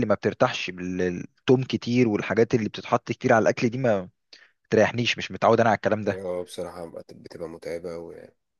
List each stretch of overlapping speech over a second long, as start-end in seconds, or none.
none